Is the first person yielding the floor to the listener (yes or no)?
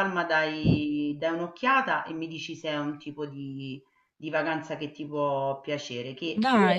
yes